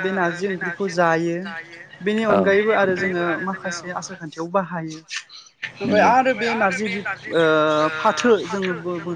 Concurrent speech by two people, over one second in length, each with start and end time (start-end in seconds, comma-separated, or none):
2.3-3.8